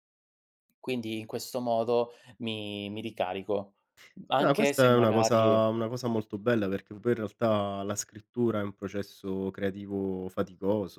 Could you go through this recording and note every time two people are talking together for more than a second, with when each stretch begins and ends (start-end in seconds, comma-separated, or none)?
4.4-5.6